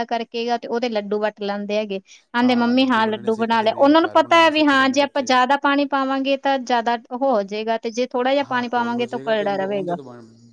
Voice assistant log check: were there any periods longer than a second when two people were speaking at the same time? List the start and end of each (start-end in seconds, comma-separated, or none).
3.0-5.3, 8.4-9.9